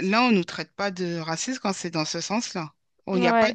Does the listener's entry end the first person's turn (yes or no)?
no